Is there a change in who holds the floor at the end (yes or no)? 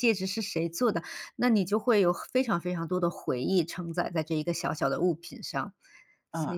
yes